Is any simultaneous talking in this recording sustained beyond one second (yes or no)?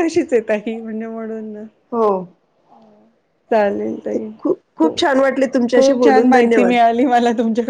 yes